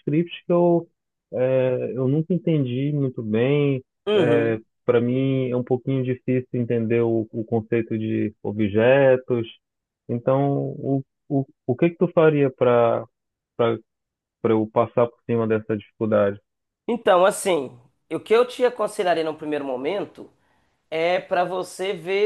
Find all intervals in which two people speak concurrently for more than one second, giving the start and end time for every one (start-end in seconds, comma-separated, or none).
none